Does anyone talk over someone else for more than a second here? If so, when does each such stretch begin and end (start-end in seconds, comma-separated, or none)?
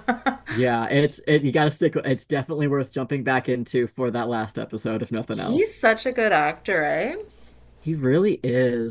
none